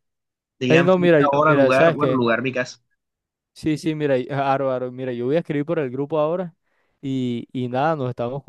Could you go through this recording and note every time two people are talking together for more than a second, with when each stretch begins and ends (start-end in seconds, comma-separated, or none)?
0.7-2.2